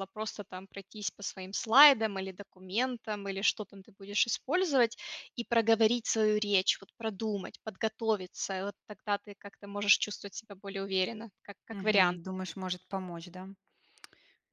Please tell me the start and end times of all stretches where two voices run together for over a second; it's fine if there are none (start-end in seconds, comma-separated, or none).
none